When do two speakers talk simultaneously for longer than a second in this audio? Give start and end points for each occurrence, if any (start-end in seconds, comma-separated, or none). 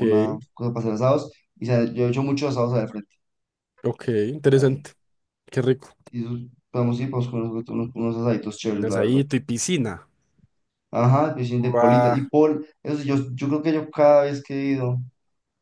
none